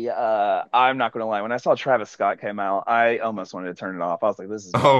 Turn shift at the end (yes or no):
yes